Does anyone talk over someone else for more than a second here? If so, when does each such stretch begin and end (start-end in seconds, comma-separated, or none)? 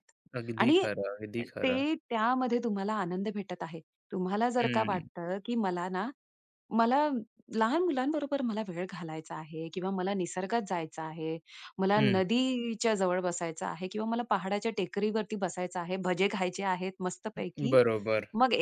none